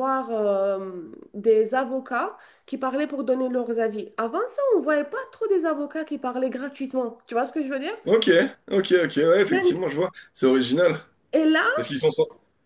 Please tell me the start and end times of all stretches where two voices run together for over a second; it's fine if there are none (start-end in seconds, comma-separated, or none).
none